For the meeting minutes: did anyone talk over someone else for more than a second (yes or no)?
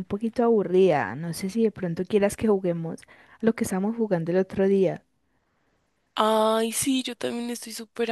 no